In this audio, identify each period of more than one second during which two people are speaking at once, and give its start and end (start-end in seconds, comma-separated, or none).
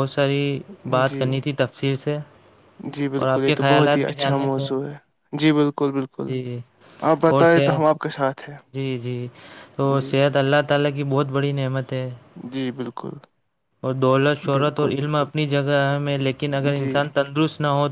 3.2-4.7